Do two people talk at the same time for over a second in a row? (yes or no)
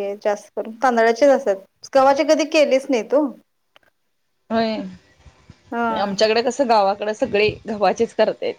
no